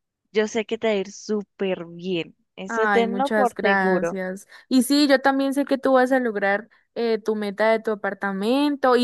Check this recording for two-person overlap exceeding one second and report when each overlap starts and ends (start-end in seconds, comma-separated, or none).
2.7-4.2